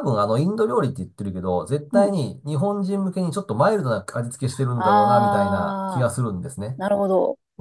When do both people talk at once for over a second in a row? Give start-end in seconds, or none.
4.8-6.1